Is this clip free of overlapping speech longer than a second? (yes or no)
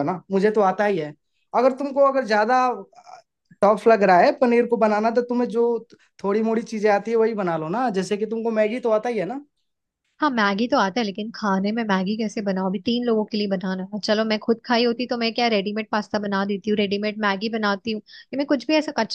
yes